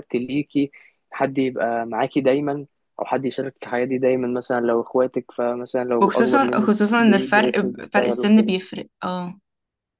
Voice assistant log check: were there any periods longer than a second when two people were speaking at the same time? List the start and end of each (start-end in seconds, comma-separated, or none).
6.0-8.5